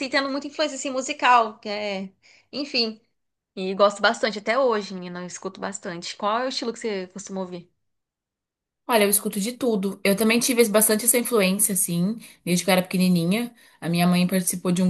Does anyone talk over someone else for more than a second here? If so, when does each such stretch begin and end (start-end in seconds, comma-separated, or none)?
none